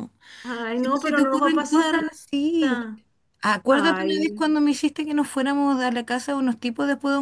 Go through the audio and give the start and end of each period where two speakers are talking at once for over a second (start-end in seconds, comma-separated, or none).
0.7-1.9